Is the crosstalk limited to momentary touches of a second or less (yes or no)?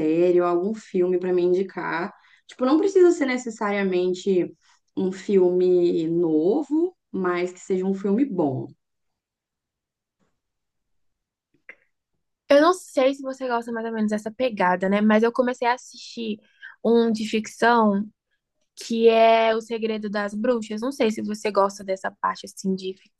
yes